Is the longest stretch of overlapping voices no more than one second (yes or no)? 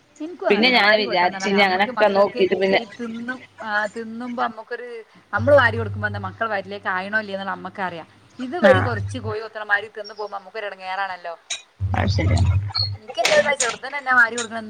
no